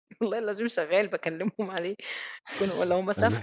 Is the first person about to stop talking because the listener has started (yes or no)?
yes